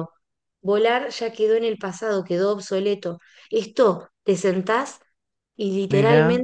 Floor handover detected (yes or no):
no